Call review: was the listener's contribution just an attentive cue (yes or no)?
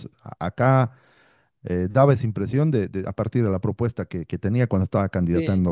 no